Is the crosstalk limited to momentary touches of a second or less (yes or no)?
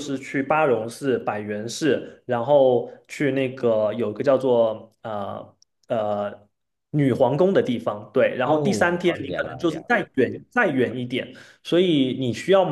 no